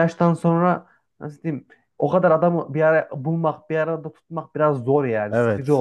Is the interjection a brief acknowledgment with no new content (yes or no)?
no